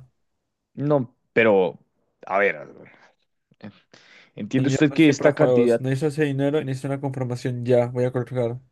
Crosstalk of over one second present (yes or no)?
yes